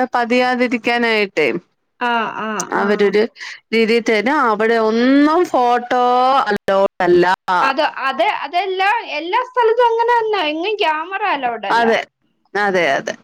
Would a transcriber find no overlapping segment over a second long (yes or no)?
yes